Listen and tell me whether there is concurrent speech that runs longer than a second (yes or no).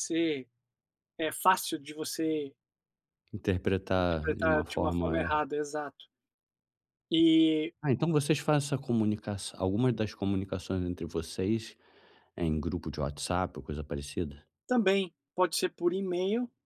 yes